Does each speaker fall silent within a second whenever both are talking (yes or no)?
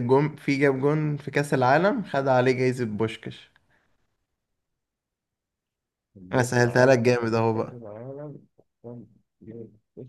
no